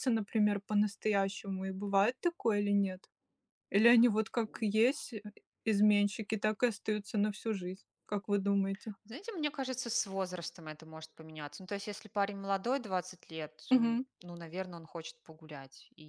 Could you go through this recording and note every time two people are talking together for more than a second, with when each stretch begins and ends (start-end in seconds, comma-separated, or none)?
none